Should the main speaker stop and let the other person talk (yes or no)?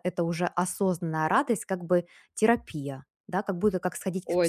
yes